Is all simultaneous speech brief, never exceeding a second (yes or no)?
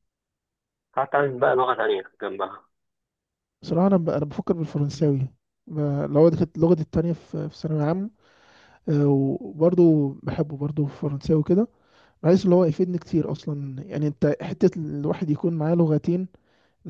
yes